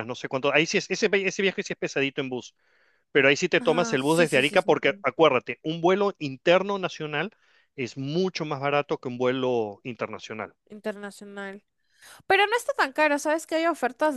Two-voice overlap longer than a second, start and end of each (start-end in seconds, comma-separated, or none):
3.5-5.0